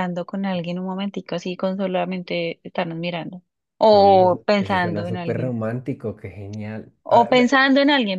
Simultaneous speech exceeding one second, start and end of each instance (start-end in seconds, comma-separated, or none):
3.9-5.5